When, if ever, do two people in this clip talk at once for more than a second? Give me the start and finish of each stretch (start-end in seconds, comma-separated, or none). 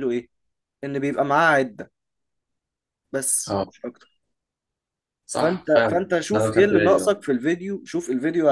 5.4-7.1